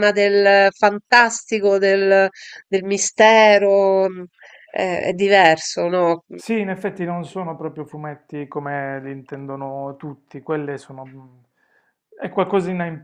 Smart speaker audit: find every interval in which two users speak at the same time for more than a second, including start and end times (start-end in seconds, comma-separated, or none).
none